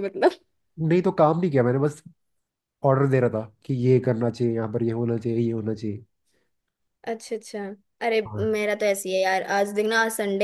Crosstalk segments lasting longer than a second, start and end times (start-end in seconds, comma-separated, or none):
none